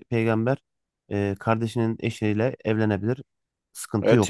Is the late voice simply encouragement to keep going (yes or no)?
no